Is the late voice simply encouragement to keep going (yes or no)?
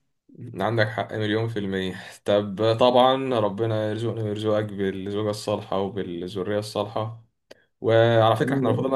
yes